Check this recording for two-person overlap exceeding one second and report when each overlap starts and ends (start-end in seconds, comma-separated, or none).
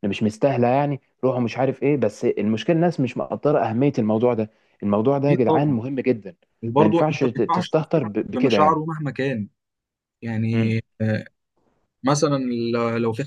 6.8-8.8